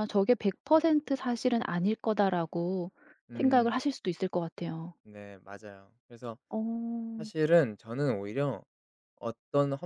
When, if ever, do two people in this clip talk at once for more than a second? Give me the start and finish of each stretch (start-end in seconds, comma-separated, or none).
none